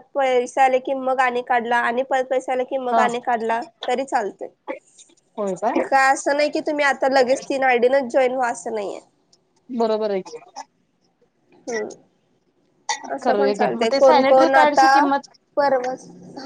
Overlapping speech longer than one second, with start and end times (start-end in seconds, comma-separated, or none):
13.2-14.9